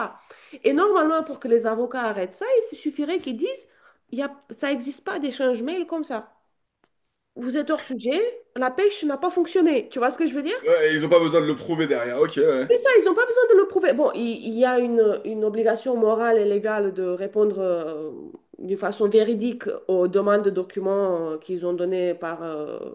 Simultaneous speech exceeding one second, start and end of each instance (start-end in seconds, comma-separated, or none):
none